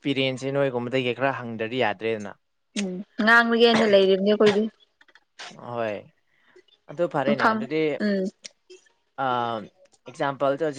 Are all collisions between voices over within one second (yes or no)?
yes